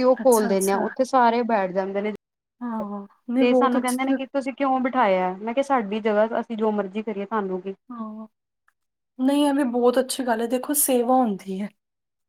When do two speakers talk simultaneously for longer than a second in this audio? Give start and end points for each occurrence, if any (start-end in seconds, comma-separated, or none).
none